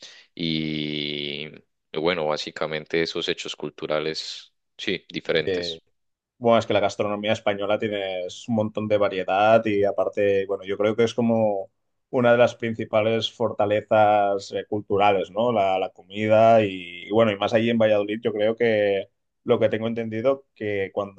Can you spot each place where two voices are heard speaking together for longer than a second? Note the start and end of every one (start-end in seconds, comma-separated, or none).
none